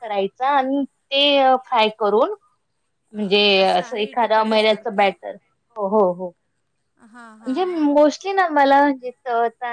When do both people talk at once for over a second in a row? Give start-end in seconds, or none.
3.6-5.2